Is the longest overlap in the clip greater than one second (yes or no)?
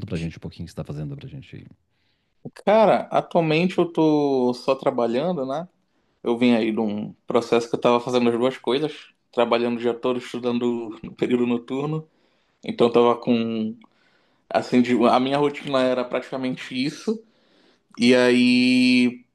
no